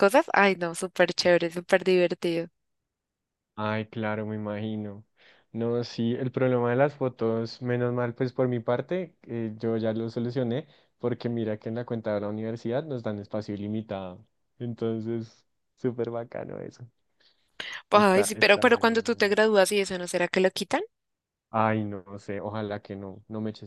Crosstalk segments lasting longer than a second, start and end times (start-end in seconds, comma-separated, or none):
17.9-19.4